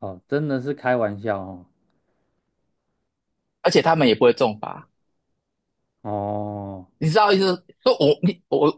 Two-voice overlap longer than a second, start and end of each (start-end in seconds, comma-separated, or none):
none